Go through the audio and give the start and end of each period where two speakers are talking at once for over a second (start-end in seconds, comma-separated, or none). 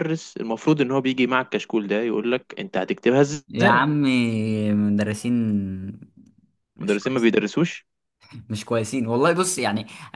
none